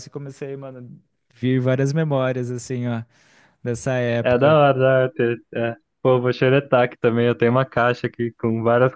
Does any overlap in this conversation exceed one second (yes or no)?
no